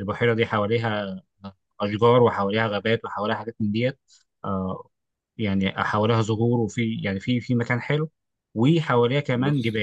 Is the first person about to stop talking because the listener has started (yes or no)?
no